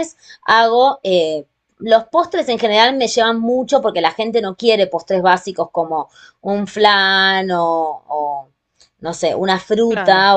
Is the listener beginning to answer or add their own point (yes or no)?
no